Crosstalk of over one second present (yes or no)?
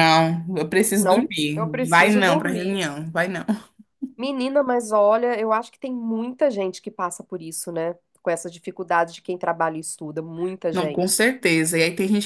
yes